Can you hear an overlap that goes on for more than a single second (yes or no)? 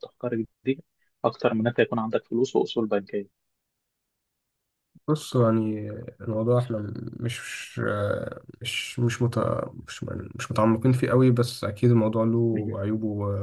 no